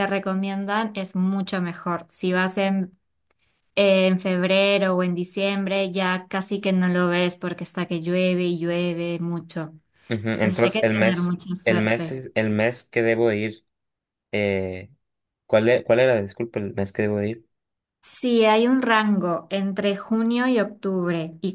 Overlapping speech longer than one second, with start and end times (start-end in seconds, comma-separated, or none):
10.3-12.2